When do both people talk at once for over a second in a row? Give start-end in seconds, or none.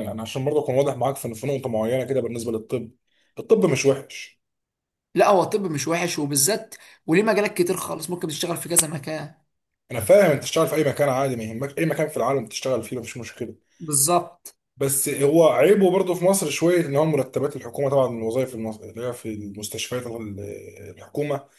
none